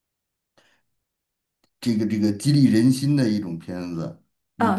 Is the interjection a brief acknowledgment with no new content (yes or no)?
no